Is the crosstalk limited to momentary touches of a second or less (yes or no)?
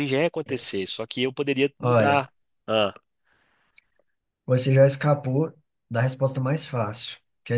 yes